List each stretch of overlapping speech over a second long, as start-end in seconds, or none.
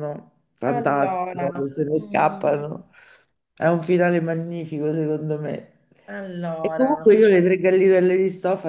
0.6-2.6